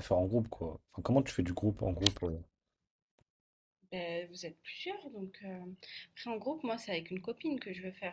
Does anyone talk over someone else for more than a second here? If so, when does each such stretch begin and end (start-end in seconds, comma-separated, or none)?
none